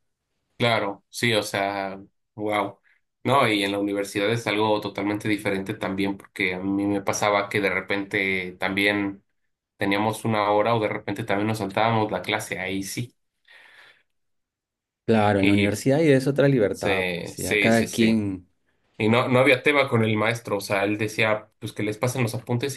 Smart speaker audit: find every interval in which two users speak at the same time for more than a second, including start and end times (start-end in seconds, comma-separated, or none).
16.7-18.2